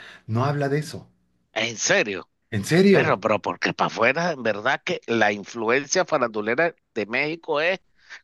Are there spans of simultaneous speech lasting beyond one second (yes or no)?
no